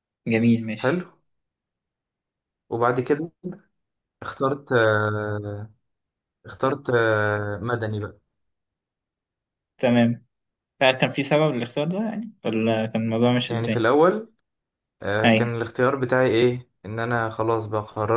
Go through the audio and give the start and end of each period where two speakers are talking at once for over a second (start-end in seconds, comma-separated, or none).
none